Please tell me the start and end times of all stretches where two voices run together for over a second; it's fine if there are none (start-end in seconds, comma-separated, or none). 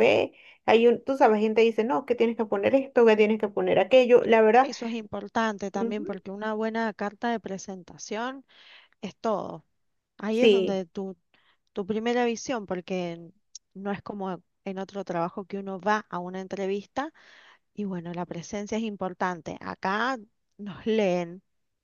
none